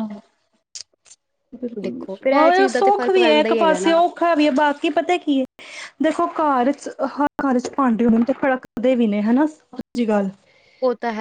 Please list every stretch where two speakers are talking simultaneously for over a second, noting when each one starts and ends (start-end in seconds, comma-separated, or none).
2.6-3.9